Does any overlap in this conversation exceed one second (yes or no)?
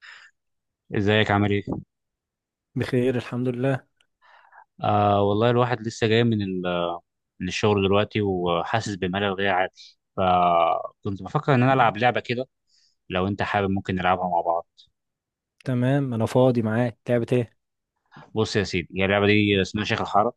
no